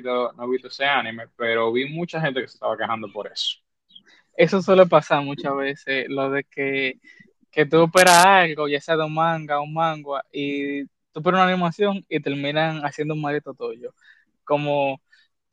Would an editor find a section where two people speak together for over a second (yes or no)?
no